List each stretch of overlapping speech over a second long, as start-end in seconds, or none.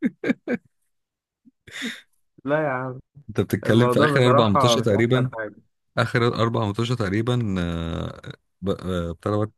3.6-5.3